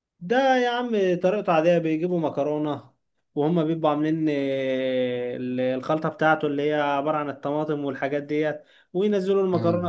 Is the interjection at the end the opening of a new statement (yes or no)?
no